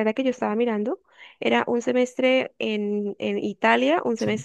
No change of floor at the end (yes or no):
yes